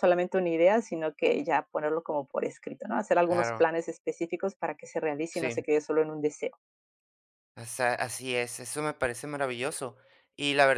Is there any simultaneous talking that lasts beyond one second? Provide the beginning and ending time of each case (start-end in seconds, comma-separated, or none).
none